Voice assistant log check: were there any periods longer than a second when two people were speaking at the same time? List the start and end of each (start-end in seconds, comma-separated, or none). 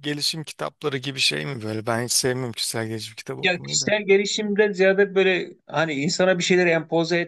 none